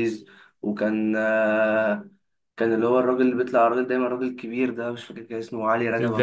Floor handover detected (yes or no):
yes